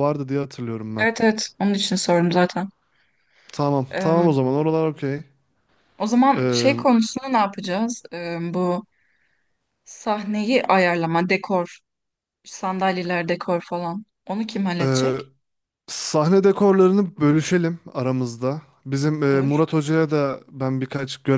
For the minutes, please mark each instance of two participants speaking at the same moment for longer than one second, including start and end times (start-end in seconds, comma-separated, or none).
none